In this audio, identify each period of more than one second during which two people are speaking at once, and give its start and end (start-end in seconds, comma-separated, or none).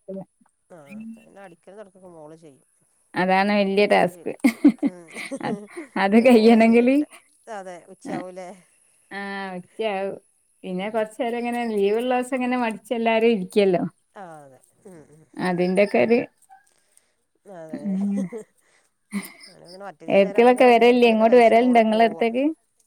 20.2-22.3